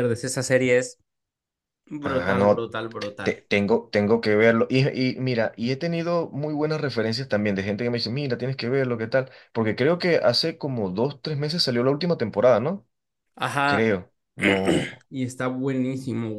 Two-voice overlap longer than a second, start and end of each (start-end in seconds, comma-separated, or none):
2.0-3.5